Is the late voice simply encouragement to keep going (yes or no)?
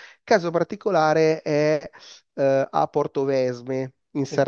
yes